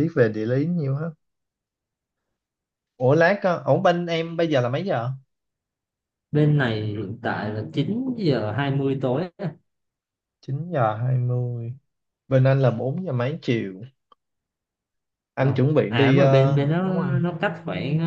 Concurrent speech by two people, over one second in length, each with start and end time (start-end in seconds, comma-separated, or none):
15.4-17.2